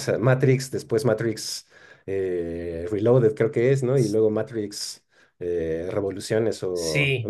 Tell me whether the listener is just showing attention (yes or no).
no